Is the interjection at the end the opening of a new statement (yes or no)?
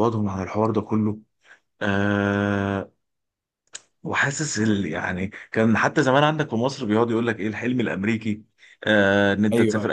no